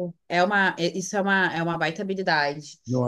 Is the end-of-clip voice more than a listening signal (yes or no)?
no